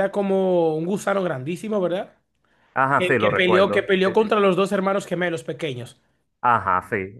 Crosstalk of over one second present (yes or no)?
yes